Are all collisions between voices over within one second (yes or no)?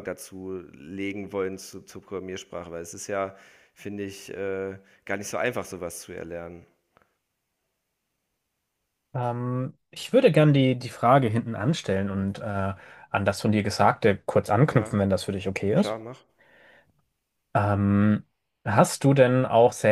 yes